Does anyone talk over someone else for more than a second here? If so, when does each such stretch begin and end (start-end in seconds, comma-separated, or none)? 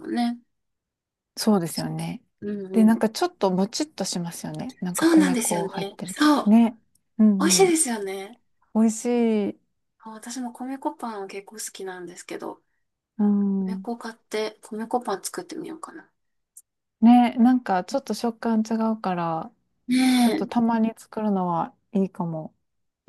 4.9-6.5